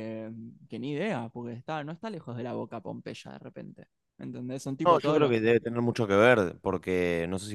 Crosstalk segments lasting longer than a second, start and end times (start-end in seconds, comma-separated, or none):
none